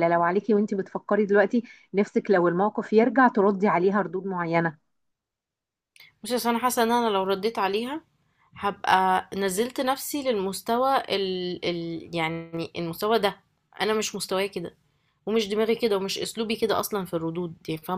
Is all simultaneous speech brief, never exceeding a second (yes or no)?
yes